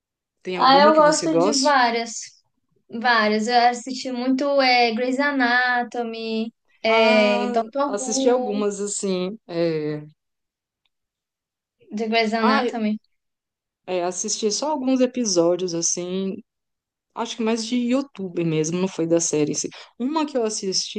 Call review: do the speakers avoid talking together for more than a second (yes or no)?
no